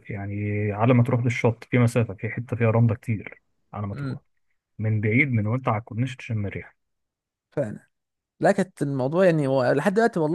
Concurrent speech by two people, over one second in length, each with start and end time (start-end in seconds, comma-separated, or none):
none